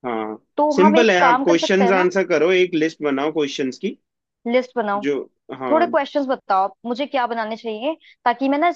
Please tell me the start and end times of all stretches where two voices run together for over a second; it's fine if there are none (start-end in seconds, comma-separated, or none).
0.6-2.1